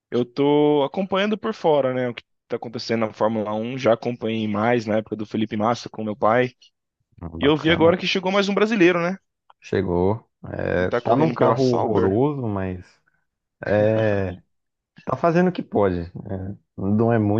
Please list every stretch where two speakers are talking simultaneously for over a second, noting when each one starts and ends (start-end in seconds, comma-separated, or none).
10.8-12.2